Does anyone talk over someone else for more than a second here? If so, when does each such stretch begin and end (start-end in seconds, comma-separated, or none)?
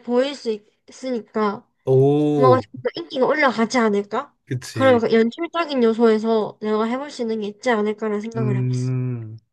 none